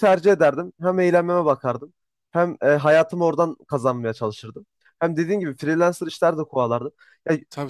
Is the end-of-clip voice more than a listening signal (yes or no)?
no